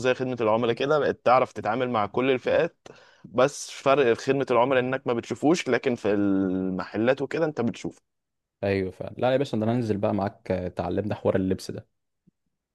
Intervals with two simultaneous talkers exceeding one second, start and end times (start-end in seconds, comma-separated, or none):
none